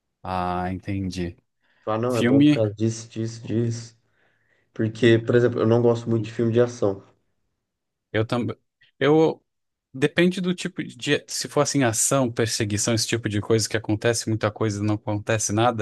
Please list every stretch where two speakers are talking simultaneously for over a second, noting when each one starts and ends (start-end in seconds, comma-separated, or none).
none